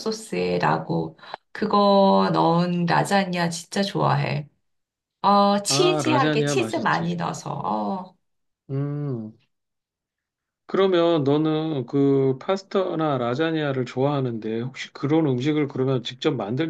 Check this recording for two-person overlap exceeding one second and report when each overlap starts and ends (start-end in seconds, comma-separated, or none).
5.7-7.1